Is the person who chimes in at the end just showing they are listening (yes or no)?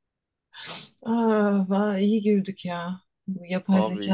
yes